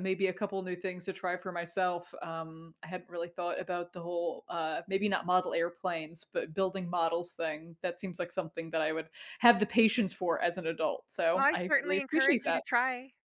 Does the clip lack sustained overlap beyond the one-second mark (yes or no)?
no